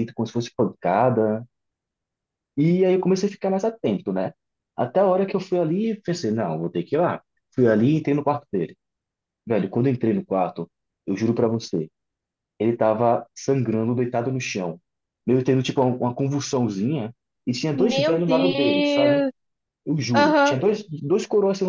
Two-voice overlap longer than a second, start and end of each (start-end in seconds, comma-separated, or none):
17.7-19.3